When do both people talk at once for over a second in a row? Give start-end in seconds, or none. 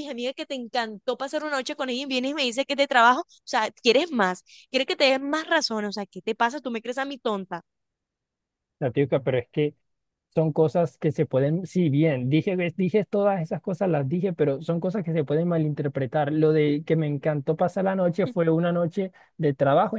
none